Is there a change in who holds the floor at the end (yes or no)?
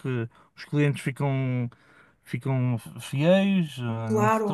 yes